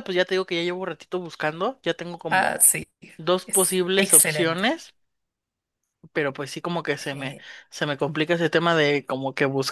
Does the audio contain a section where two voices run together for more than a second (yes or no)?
yes